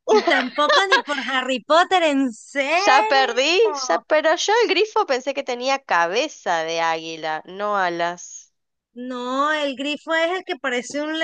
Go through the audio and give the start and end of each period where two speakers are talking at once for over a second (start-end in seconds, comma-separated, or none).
none